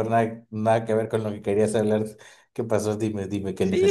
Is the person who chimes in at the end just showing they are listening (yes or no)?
no